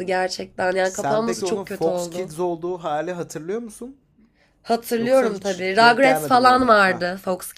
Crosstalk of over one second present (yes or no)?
yes